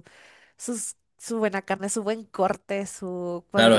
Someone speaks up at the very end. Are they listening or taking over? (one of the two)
taking over